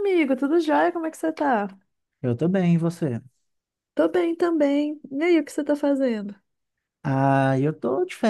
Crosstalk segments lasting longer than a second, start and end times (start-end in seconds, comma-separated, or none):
none